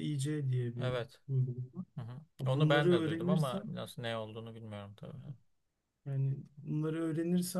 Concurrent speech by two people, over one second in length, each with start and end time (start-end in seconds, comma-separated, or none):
2.4-3.7